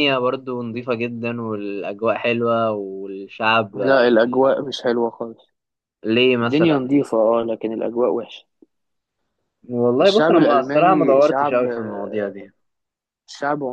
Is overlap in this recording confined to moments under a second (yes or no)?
no